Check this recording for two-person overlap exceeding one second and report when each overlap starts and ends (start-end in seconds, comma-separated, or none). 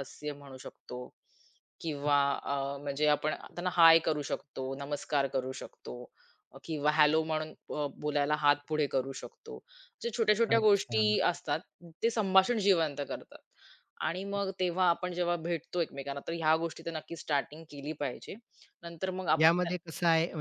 none